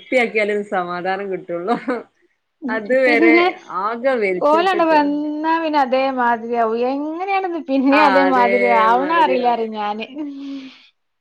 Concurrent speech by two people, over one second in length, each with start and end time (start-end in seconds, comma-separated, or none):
none